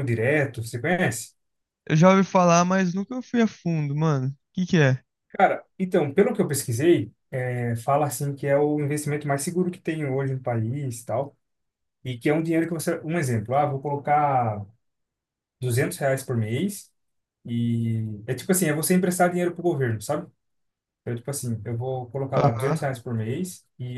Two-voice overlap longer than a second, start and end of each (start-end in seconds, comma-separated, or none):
none